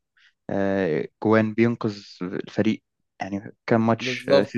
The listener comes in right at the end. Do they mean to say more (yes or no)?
no